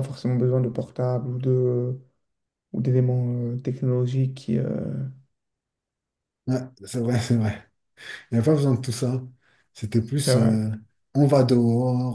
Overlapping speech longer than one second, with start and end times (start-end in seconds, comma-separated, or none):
none